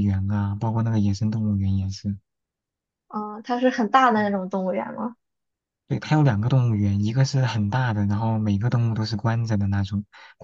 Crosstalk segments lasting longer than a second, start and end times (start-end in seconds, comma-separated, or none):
none